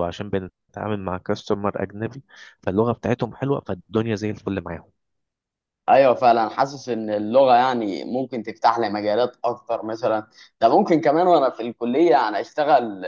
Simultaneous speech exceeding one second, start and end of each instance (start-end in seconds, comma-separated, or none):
none